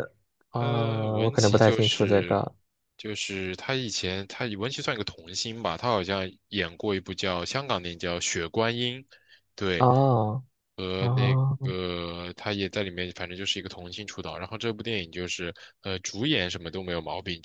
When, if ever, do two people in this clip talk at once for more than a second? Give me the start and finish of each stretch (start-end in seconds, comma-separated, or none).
0.6-2.4